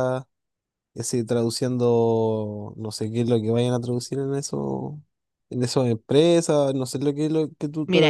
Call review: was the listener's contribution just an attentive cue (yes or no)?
no